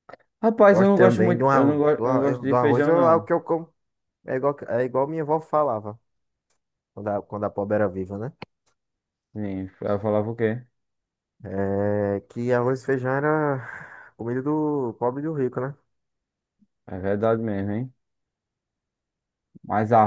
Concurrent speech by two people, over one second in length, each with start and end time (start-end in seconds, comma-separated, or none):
0.7-3.3